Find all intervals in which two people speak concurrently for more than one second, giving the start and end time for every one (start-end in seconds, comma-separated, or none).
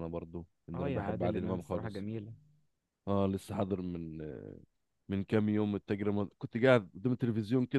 0.8-2.1